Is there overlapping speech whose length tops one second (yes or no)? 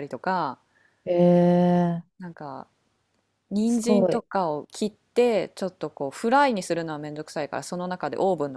no